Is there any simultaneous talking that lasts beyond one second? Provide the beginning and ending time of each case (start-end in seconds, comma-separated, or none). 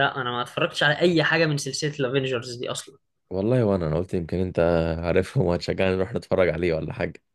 none